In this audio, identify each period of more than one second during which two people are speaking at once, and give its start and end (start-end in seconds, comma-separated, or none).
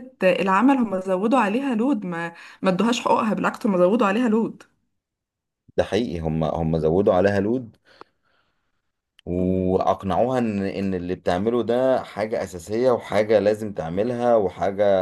none